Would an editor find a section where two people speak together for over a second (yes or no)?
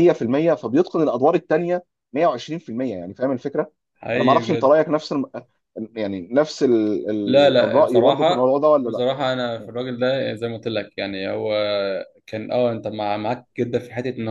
yes